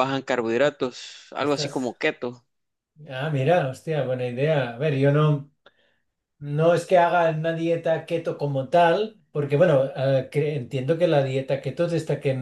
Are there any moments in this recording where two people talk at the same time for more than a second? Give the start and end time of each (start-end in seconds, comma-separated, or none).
none